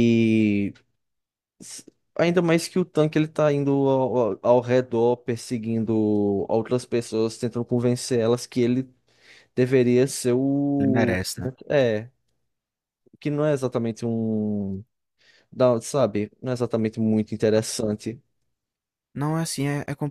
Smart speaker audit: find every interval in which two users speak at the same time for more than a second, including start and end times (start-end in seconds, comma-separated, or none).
none